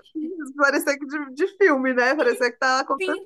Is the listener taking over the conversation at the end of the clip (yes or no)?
yes